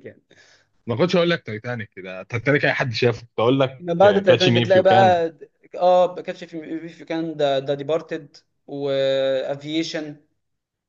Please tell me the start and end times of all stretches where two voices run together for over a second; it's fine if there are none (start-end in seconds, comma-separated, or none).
3.8-5.2